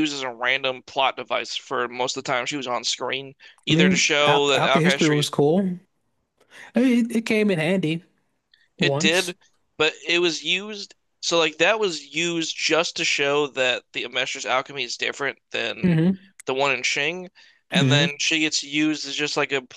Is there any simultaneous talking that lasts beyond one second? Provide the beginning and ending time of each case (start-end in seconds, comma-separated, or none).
3.7-5.3